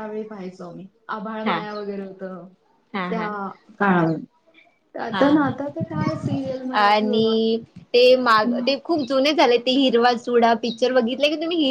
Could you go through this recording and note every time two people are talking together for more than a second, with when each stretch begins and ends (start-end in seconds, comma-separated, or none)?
6.9-8.7